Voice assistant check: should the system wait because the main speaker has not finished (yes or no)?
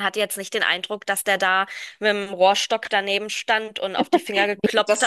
yes